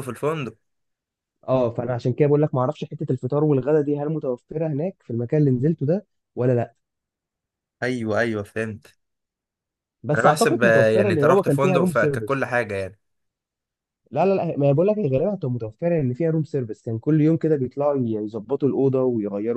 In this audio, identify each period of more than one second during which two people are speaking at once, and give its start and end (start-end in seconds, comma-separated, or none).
10.2-12.5